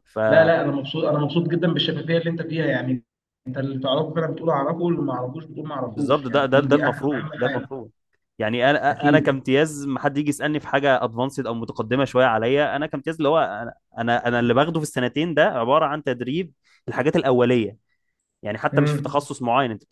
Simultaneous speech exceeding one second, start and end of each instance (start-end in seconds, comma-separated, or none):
5.9-7.9